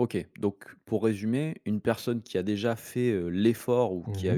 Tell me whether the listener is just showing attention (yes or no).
yes